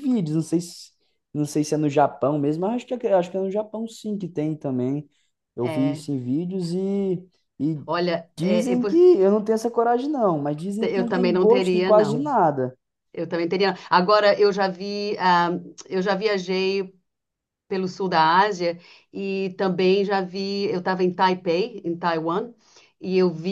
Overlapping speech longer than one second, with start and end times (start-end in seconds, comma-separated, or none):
10.8-12.3